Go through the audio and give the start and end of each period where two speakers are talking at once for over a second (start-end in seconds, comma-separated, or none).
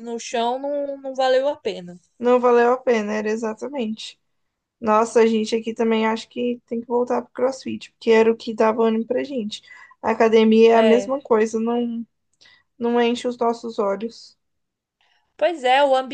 none